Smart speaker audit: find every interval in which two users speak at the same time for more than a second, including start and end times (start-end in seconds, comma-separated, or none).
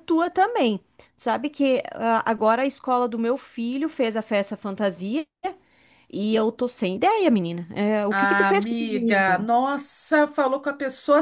8.1-9.5